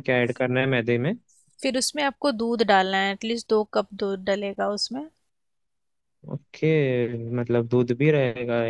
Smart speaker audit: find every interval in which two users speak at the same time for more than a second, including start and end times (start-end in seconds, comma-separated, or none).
none